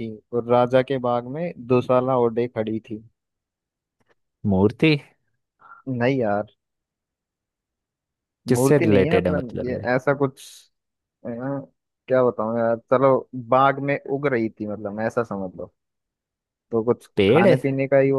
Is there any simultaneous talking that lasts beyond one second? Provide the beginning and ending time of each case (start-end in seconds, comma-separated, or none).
8.5-9.8